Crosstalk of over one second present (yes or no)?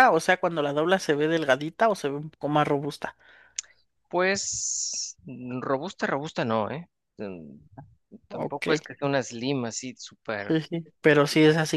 no